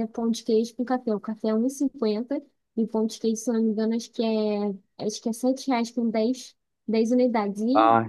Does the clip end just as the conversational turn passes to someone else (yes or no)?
yes